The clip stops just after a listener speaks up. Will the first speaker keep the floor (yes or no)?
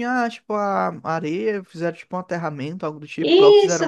no